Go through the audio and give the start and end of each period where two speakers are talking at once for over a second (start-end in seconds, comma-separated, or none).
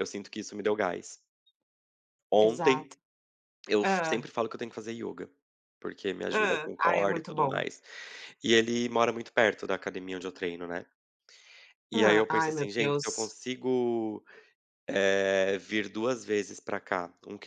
6.3-7.6, 11.9-13.3